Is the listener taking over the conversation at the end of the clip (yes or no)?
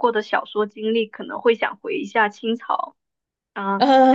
yes